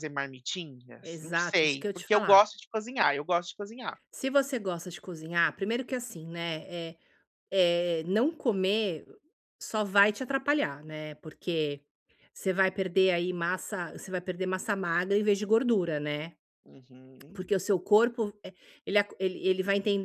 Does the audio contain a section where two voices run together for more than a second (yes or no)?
yes